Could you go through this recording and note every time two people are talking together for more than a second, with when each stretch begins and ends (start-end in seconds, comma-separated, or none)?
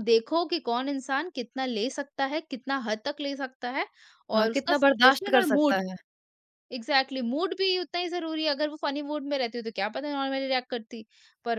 4.4-5.8